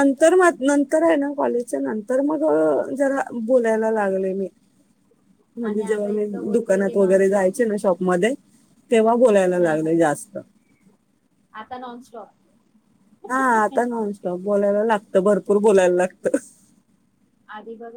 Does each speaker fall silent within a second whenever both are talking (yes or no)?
no